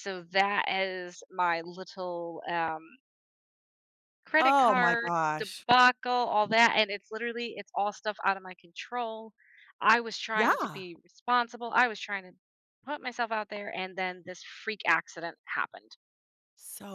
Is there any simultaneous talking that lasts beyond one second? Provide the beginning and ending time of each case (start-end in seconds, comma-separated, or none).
4.4-5.7